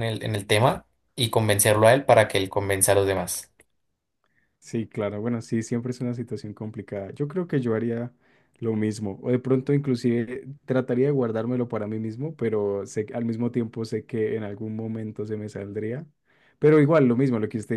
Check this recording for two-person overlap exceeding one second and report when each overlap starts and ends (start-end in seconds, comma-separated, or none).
none